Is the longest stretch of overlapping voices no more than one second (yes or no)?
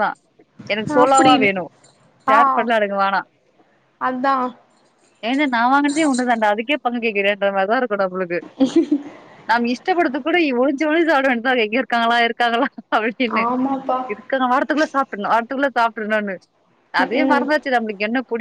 yes